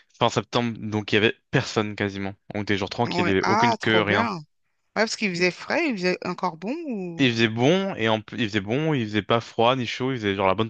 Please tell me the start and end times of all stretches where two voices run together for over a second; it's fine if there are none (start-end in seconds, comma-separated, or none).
3.0-4.3